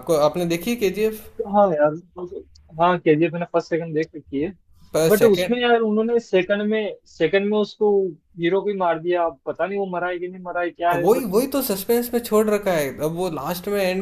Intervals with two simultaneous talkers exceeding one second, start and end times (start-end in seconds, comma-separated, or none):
none